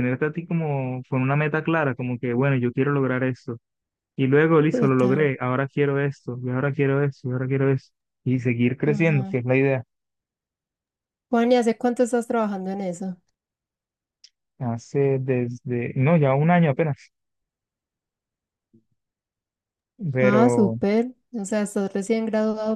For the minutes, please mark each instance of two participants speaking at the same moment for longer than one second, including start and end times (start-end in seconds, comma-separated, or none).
none